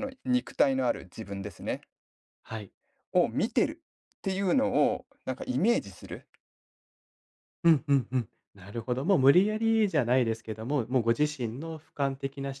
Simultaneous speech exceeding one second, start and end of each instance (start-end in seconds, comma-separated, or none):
none